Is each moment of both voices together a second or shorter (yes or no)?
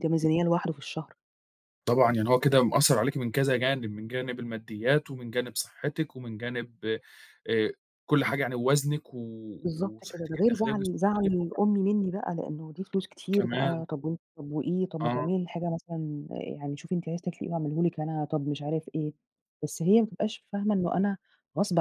no